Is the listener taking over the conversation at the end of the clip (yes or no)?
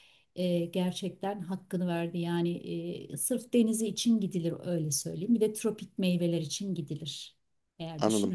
yes